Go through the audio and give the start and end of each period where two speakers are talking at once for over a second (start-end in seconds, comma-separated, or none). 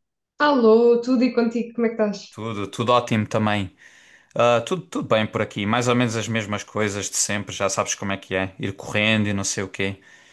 none